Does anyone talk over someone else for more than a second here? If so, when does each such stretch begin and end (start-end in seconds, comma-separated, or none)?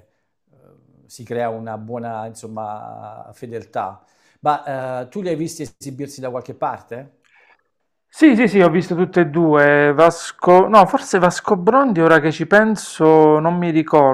none